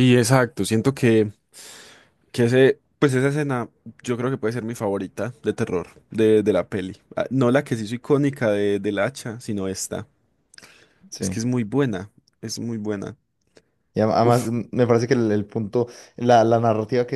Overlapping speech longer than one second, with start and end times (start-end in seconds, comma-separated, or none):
none